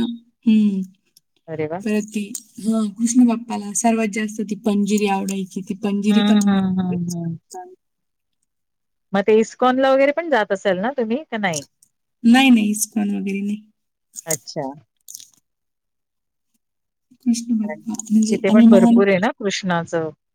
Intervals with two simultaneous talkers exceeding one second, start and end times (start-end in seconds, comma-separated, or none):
17.7-19.1